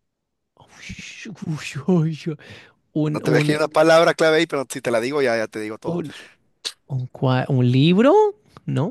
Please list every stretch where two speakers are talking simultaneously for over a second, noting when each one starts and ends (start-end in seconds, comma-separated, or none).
none